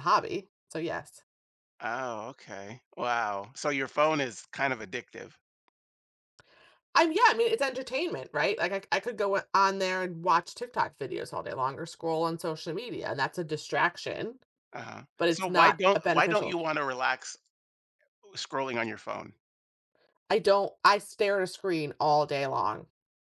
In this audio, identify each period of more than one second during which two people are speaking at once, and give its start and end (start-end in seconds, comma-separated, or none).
15.2-16.6